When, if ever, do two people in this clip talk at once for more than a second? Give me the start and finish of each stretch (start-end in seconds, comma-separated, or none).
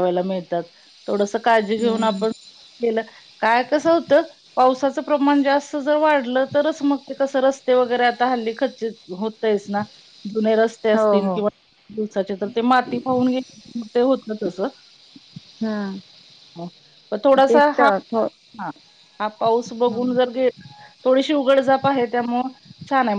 none